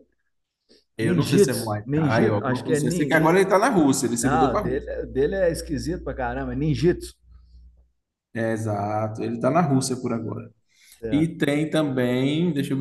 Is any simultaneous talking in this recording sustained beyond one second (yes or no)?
yes